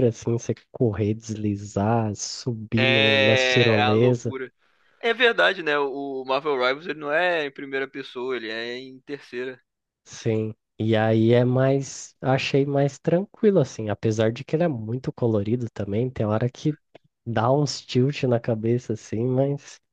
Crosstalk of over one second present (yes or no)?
yes